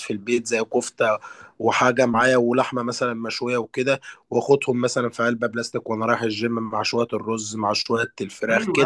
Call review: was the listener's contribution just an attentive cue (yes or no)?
no